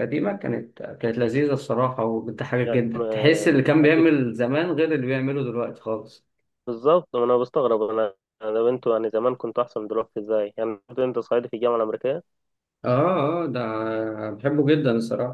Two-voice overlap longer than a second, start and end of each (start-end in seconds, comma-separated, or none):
2.6-4.2